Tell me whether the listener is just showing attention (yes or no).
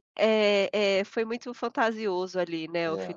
no